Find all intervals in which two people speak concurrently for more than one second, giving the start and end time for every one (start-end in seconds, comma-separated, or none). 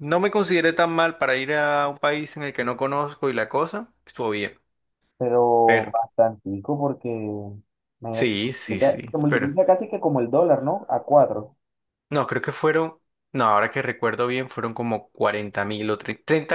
8.1-9.5